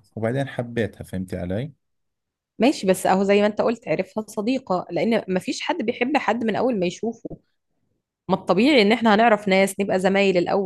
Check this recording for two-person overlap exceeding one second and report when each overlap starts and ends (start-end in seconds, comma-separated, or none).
none